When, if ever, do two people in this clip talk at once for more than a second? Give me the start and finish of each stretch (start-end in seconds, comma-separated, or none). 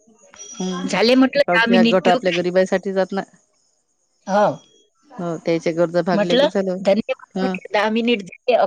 0.9-2.5